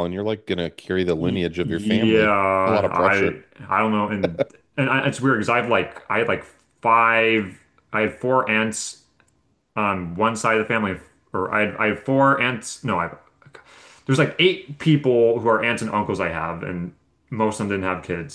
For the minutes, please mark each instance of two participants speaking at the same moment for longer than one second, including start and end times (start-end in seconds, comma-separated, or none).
1.2-3.4